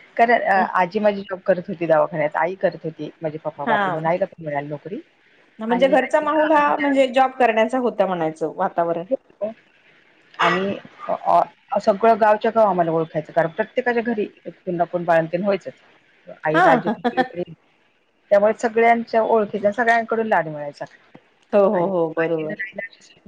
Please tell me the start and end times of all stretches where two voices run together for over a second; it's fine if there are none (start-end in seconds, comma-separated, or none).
5.7-7.0